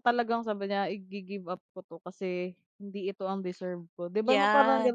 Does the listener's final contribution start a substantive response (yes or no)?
yes